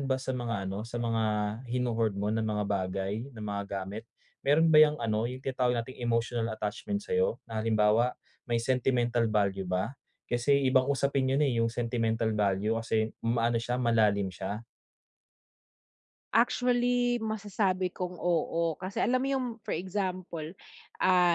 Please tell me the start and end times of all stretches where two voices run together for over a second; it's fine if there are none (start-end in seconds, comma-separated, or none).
none